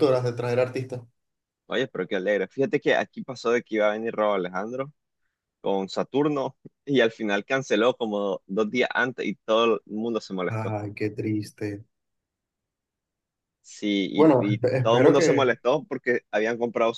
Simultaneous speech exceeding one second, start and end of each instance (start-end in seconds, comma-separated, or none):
14.1-15.5